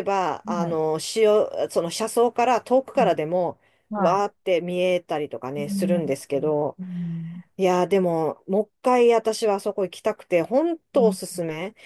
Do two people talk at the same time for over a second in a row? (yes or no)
no